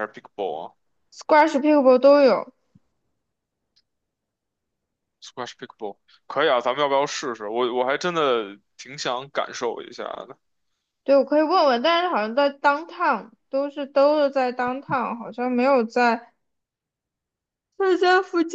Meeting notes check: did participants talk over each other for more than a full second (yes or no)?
no